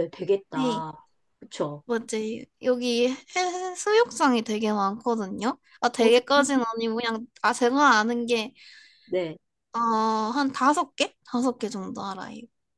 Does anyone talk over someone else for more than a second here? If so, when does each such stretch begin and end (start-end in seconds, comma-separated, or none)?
none